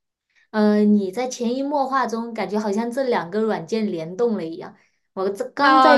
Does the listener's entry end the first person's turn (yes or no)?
yes